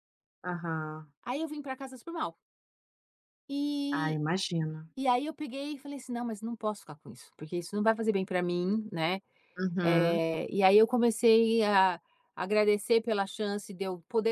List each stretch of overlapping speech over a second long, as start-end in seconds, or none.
none